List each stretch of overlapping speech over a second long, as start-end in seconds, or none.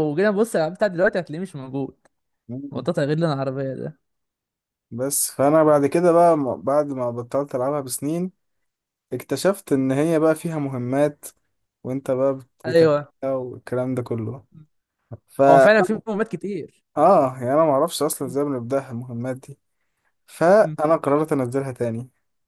none